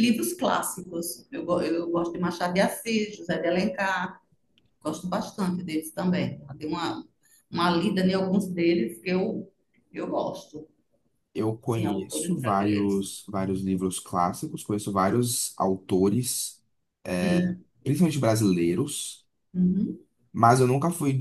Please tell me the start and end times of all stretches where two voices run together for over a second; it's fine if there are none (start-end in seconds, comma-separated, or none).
11.7-13.1